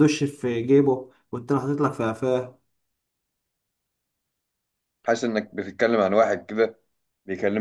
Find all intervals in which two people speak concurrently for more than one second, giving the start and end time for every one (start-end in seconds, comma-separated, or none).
none